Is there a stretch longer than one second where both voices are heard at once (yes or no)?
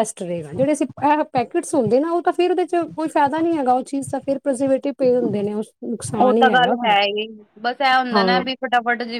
no